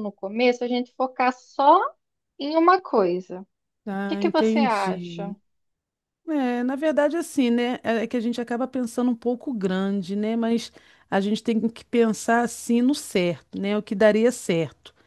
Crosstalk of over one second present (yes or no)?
yes